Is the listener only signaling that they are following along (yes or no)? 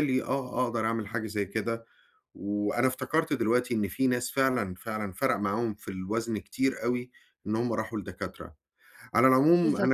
yes